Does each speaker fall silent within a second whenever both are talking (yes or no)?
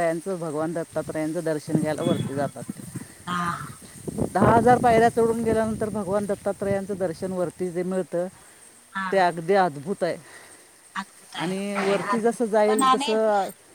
no